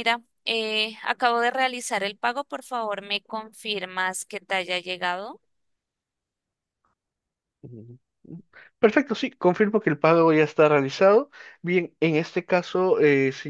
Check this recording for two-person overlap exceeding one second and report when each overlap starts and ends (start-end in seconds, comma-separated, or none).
none